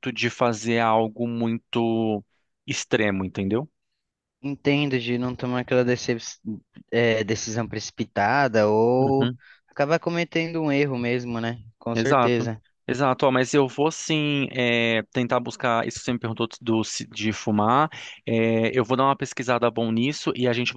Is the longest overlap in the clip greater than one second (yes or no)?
no